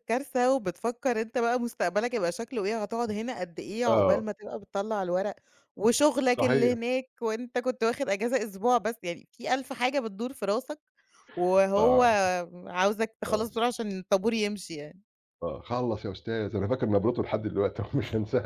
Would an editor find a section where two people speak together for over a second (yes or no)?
no